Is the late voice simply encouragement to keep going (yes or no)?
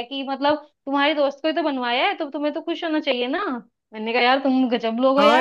no